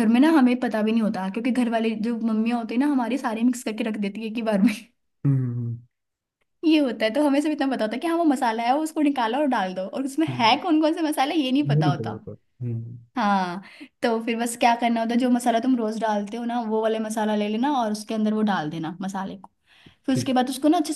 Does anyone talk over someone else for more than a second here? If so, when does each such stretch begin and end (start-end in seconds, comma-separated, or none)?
none